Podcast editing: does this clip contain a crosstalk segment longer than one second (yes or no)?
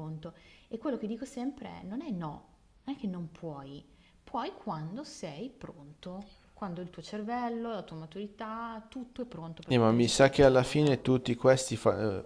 yes